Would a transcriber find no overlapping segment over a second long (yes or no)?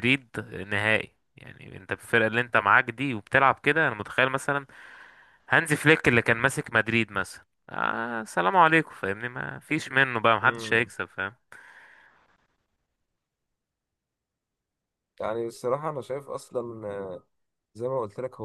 yes